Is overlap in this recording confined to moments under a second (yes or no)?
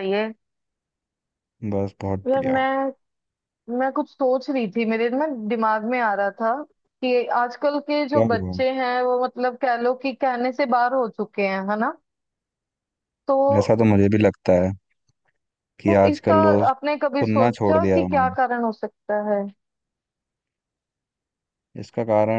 no